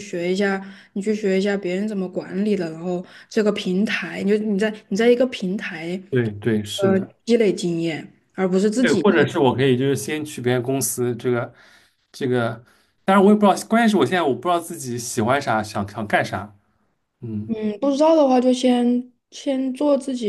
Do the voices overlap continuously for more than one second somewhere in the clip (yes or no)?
no